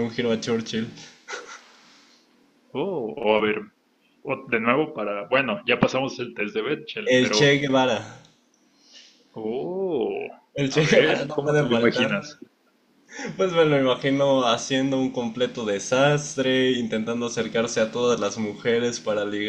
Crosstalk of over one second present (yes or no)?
yes